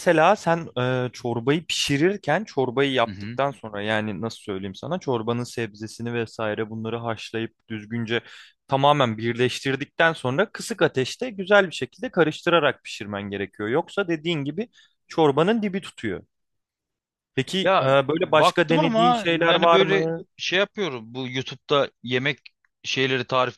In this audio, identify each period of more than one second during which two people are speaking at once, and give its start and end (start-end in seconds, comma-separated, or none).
17.6-20.2